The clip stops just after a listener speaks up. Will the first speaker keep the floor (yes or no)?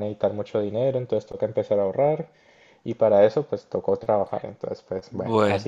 yes